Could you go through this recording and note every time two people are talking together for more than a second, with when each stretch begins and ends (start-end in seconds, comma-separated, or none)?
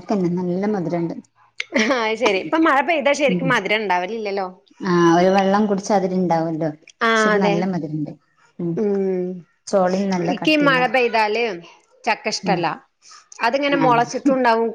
none